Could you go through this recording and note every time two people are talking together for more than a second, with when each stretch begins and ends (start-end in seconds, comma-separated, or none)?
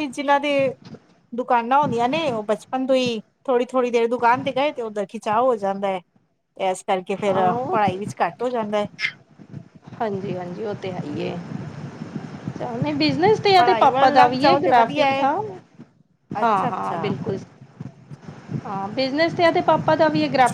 13.6-15.2